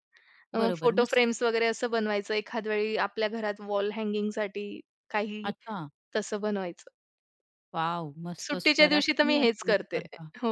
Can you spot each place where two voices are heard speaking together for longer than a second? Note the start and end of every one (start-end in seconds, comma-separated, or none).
8.4-10.0